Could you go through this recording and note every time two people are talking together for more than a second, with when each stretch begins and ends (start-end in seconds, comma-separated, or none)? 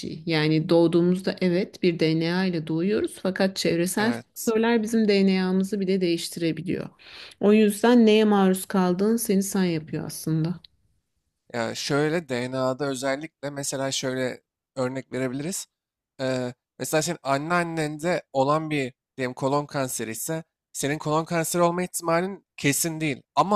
none